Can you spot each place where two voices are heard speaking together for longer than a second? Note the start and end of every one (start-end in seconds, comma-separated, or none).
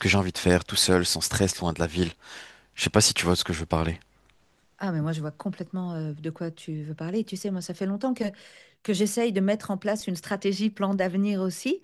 none